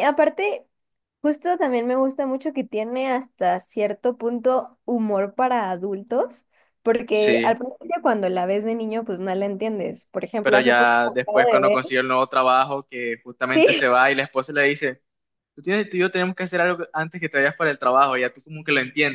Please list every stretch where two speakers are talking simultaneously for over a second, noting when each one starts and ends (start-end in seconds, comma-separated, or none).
10.4-11.8